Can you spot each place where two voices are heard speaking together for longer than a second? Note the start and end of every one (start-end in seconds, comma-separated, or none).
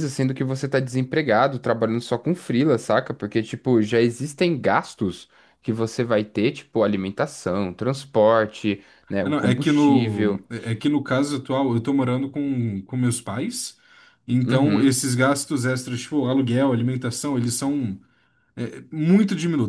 9.2-10.4